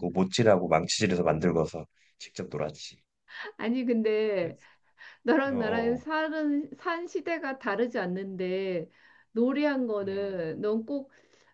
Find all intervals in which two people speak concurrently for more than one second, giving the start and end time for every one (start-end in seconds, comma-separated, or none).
none